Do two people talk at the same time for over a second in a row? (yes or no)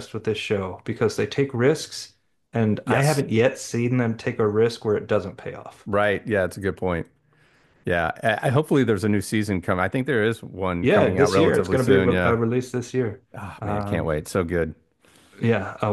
yes